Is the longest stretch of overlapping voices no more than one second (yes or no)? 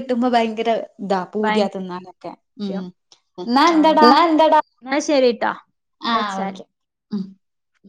yes